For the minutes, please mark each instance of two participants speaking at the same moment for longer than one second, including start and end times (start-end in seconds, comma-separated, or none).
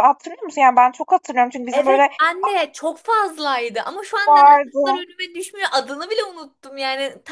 none